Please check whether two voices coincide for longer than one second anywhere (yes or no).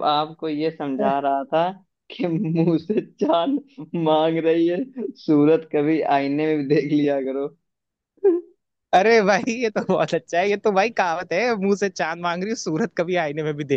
no